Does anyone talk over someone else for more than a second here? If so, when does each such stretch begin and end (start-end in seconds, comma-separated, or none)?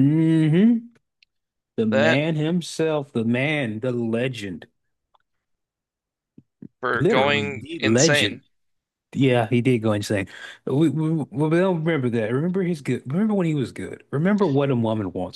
7.0-8.4